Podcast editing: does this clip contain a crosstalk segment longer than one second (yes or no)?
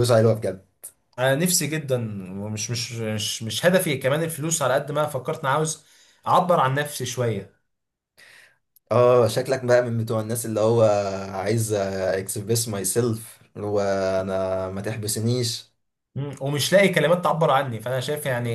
no